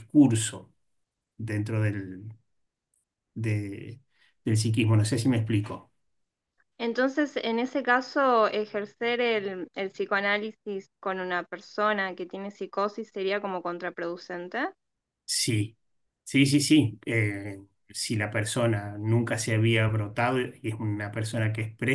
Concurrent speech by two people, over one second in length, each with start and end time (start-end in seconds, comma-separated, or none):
none